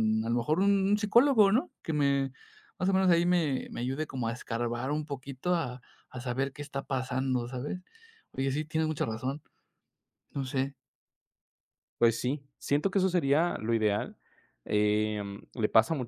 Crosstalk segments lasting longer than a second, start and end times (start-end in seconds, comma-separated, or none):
none